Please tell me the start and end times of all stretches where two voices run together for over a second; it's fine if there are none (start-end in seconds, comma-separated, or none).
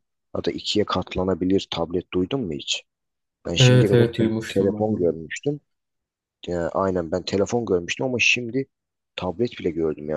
3.6-5.1